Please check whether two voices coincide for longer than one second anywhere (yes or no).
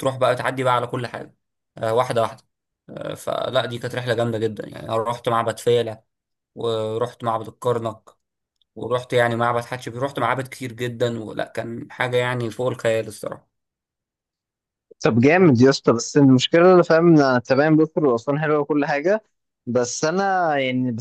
no